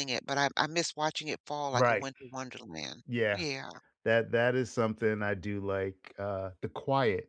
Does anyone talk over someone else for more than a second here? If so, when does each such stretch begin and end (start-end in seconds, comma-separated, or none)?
none